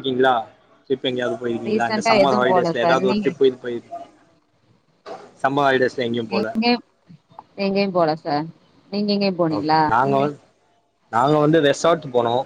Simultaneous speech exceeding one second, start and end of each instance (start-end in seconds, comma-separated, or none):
1.7-3.3